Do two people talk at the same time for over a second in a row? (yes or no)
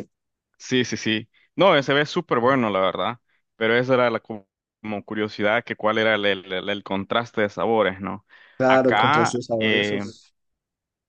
yes